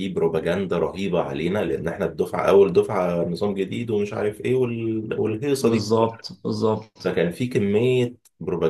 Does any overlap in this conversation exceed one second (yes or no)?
no